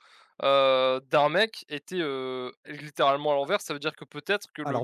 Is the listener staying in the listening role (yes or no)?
yes